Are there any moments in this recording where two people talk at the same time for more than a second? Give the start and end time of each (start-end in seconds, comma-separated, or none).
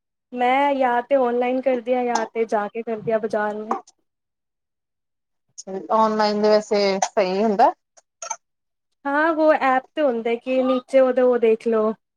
none